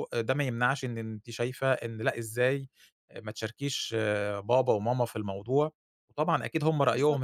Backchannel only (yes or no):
yes